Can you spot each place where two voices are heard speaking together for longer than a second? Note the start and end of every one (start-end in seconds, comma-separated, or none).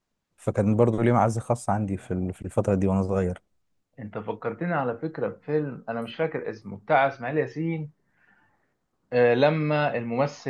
none